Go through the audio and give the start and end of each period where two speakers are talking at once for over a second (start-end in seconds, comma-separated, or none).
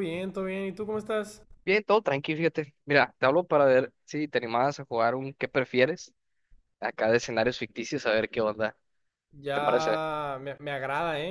none